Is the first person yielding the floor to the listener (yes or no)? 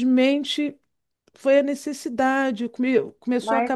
no